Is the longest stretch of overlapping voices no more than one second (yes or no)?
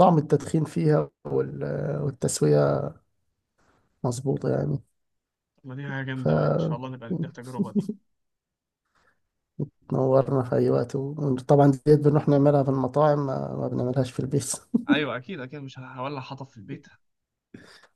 yes